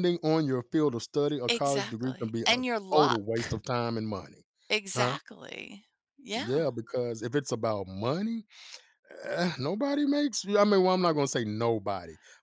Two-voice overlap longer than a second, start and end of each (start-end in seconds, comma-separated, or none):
1.5-3.2